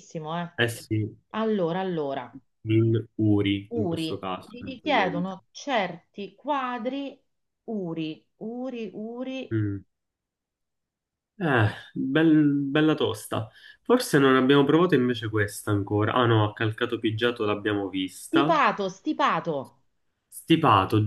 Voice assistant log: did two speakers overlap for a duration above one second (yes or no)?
yes